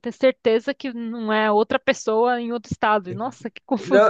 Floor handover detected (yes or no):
yes